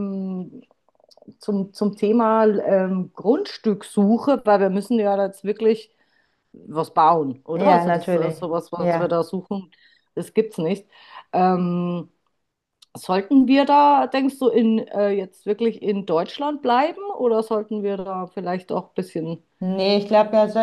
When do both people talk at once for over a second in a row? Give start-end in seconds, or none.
7.5-9.2